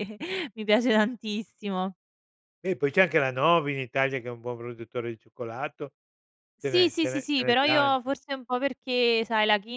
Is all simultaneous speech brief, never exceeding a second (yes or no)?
no